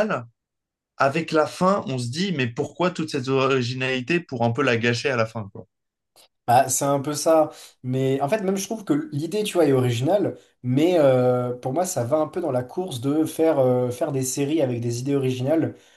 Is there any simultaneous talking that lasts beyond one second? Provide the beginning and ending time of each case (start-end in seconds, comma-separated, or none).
none